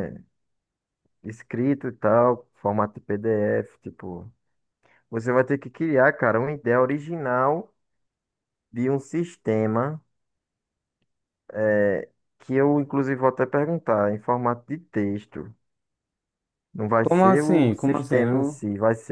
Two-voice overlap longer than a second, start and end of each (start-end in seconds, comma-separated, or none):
17.0-18.6